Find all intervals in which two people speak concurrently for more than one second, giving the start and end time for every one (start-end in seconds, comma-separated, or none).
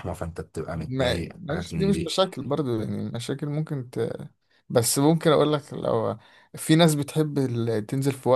0.7-2.2